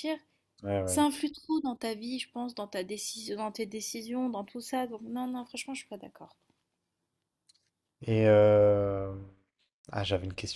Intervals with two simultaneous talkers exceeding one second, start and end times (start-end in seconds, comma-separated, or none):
none